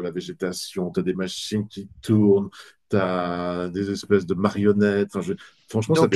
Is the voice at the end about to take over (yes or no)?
yes